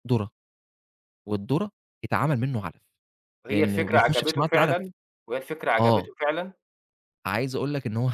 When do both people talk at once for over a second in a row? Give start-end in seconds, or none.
3.5-4.8